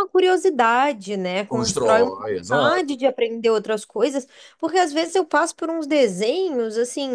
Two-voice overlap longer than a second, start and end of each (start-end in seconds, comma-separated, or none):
1.5-3.0